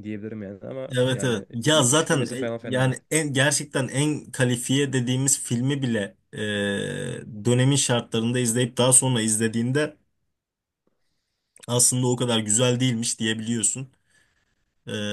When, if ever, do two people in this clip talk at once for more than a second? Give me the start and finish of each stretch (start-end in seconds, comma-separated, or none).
1.0-3.0